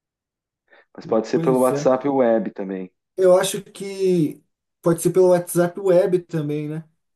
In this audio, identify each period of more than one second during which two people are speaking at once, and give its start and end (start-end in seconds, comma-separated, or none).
none